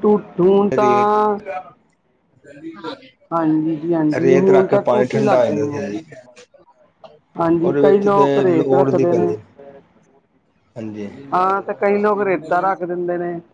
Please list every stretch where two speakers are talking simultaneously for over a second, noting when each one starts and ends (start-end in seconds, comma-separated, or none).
4.2-5.8, 7.6-9.3